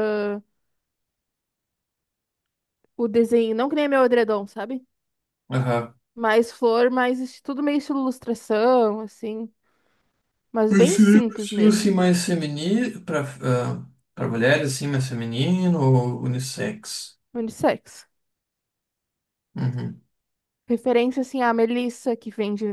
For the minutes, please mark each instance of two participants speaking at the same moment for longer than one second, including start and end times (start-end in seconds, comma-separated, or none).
10.7-11.9